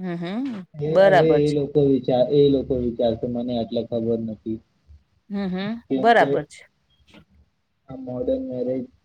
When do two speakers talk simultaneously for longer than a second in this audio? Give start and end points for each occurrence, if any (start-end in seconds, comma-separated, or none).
none